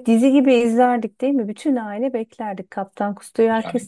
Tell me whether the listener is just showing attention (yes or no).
no